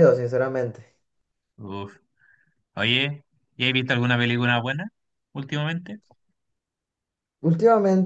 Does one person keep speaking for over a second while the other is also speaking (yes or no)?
no